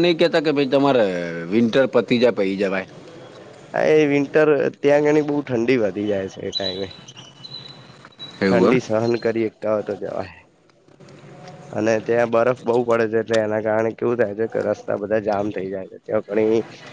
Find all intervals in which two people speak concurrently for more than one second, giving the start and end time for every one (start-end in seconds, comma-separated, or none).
none